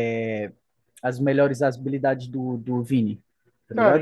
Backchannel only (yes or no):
no